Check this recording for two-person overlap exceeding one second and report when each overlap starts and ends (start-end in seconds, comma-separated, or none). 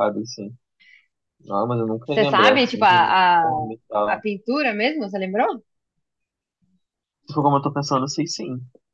2.0-3.4